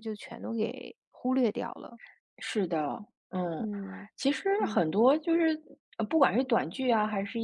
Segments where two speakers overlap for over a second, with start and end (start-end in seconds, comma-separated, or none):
none